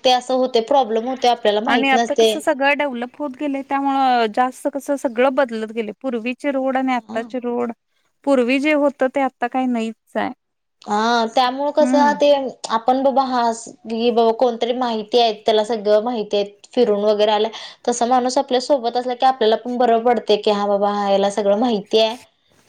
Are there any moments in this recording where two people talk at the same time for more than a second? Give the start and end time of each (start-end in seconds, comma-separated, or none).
none